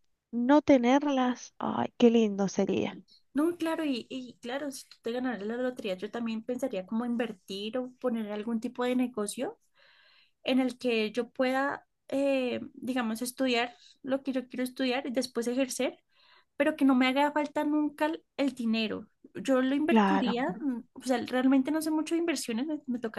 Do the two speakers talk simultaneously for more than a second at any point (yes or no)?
no